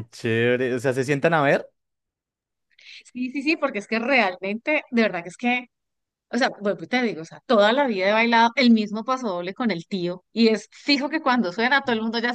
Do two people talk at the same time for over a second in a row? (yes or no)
no